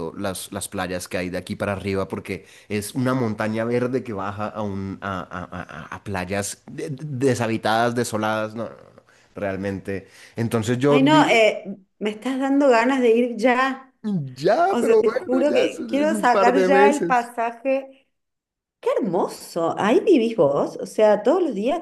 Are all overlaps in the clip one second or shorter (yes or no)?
no